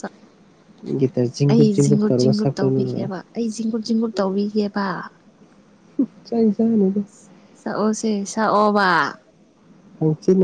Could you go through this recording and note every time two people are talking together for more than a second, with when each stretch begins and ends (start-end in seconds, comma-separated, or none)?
1.5-3.1